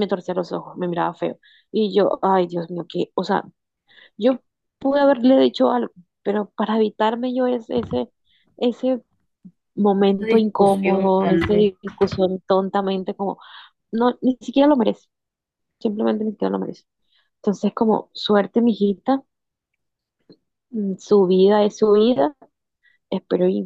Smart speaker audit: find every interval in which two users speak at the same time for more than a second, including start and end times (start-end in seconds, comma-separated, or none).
10.2-11.7